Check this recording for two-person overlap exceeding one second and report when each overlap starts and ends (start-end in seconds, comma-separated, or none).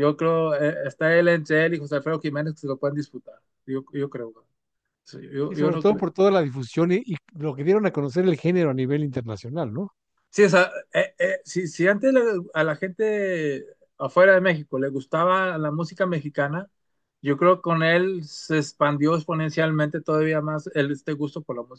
none